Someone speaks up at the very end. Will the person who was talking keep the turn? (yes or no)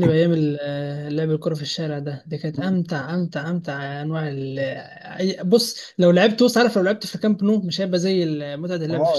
no